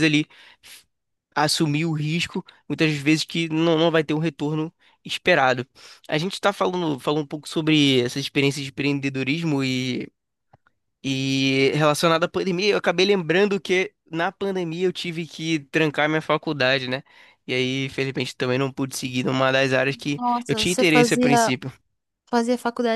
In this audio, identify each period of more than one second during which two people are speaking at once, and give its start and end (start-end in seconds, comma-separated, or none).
20.1-21.5